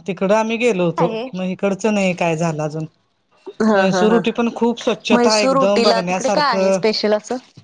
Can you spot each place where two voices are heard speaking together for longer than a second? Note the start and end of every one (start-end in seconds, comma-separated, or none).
5.1-6.8